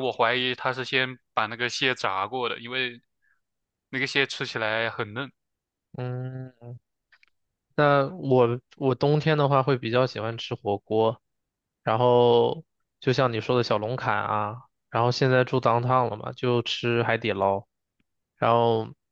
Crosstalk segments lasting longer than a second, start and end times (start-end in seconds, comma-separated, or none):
none